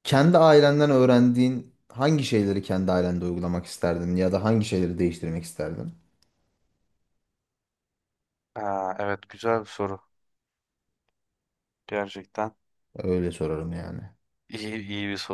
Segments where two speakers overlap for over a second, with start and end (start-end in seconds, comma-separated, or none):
none